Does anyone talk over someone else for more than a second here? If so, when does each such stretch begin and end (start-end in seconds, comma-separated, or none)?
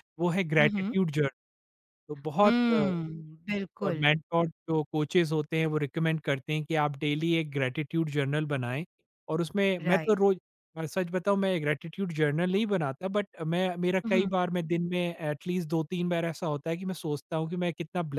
none